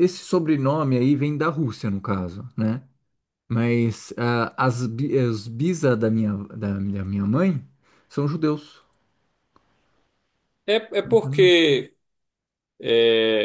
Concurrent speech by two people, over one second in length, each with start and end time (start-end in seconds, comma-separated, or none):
none